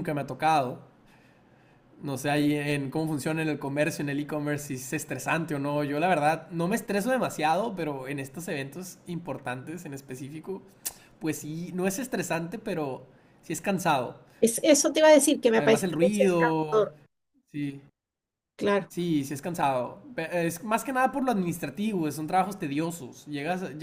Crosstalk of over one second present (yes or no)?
yes